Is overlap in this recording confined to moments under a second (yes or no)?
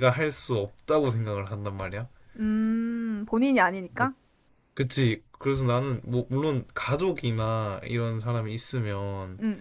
yes